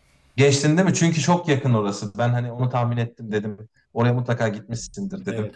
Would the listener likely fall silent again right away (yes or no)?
yes